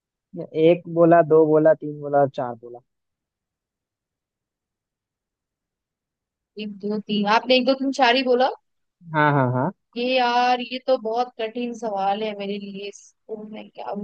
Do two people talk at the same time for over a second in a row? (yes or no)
no